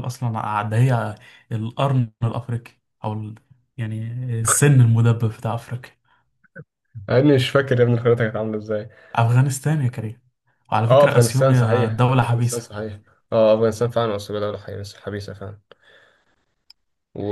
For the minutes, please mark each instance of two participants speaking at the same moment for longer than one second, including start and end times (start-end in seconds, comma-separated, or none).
10.9-12.8